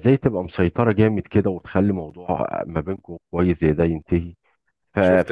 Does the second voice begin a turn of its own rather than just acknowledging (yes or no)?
no